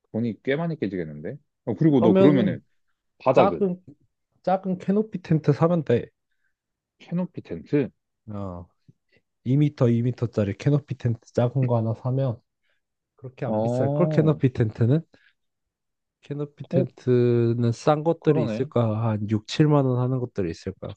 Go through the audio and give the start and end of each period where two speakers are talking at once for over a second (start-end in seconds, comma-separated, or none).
none